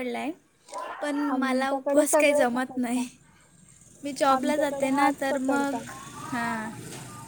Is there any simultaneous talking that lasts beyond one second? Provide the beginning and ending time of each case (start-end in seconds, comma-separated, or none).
1.3-3.1, 4.3-5.8